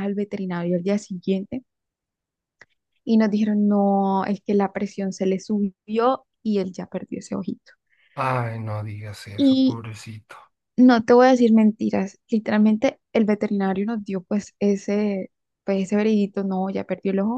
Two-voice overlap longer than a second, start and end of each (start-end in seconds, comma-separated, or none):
none